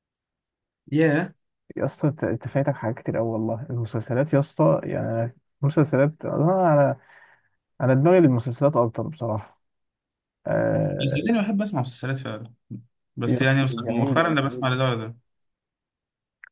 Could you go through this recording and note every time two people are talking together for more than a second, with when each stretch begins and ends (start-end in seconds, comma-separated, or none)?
13.3-14.7